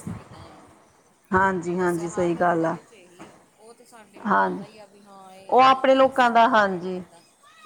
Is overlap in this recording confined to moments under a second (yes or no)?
no